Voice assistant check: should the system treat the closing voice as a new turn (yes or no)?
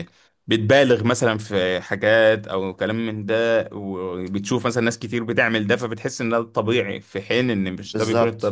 yes